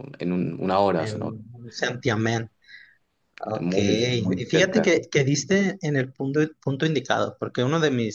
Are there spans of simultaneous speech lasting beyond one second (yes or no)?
yes